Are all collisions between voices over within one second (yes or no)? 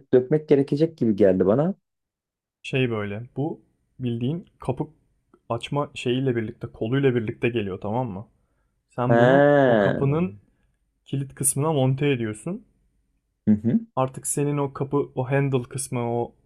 no